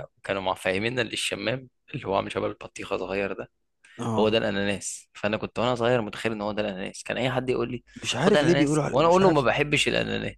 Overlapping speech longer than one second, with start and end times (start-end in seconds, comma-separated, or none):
8.0-9.5